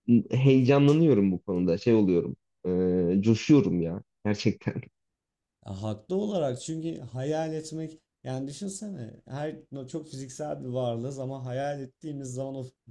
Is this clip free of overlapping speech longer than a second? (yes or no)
yes